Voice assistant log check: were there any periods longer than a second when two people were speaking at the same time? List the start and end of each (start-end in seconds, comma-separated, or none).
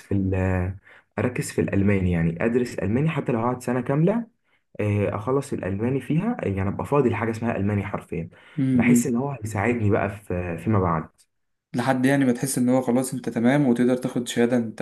none